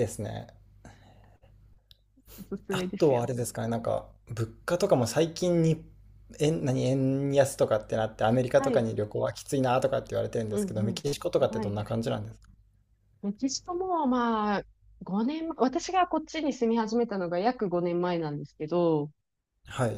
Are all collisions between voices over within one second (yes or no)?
no